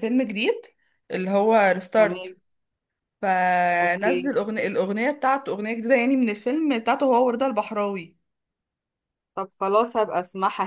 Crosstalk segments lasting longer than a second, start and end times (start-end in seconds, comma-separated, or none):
none